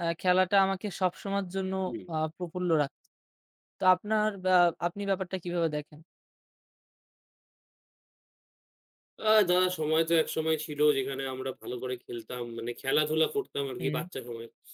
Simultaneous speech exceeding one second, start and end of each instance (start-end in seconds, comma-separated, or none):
none